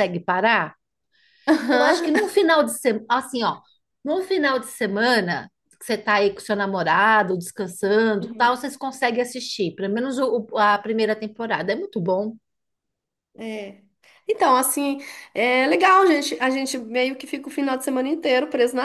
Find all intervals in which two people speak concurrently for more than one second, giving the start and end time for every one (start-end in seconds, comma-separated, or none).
none